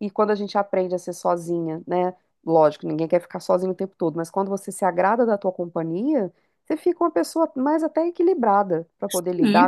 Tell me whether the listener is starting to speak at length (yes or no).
yes